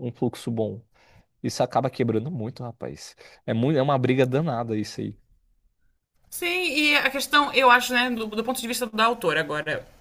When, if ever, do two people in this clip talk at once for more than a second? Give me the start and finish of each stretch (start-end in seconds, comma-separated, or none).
none